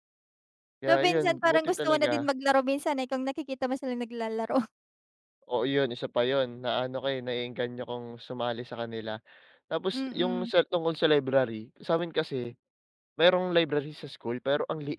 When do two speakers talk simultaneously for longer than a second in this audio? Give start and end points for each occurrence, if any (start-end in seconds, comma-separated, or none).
0.9-2.3